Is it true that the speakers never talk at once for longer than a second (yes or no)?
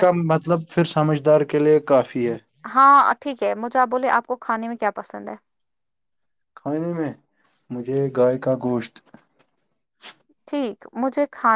yes